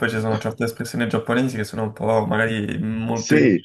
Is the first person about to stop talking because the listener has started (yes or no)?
yes